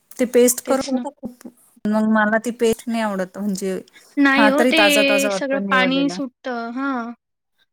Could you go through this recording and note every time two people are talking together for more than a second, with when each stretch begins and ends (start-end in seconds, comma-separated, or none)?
4.4-6.2